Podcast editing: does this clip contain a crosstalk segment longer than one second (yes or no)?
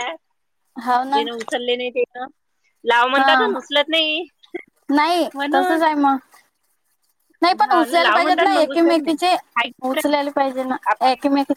yes